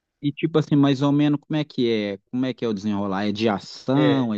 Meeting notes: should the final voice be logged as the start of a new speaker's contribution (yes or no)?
yes